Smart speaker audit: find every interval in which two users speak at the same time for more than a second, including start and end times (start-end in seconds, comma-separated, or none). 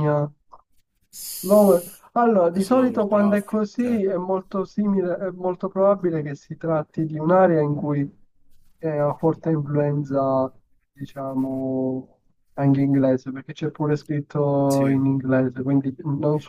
2.6-4.0